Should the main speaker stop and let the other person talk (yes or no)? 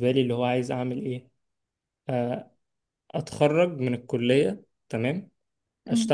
no